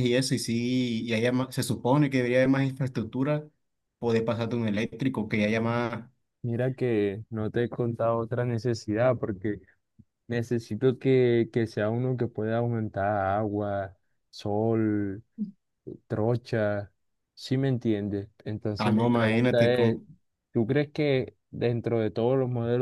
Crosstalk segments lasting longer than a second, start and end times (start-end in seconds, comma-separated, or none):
18.8-20.0